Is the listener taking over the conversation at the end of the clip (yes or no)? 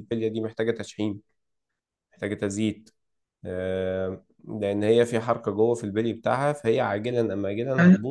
yes